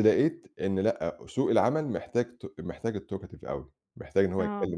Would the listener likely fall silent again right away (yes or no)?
yes